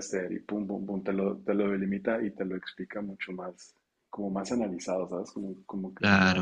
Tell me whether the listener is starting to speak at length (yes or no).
yes